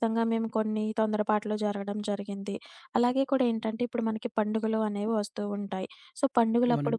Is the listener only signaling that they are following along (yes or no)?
yes